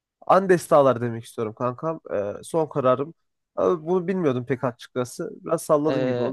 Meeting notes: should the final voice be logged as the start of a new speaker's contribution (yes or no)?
yes